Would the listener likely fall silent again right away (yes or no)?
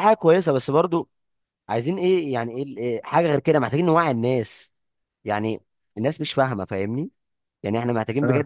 yes